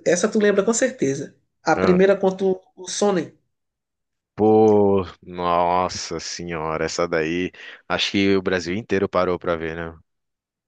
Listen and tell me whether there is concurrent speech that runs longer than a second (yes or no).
no